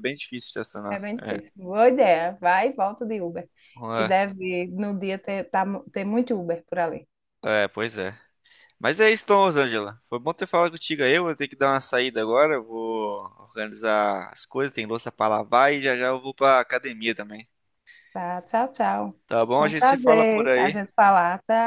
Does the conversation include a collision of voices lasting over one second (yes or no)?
yes